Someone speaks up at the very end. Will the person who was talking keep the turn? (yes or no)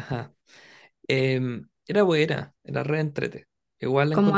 yes